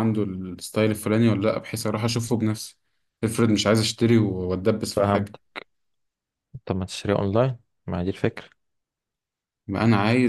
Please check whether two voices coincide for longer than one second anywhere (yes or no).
no